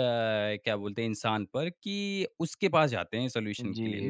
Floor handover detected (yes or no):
yes